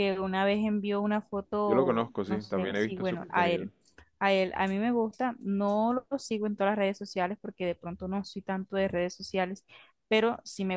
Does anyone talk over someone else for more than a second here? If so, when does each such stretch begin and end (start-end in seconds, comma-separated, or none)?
1.6-3.7